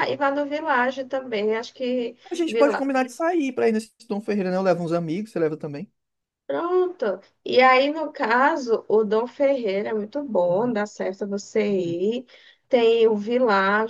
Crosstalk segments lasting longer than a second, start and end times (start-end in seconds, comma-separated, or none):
none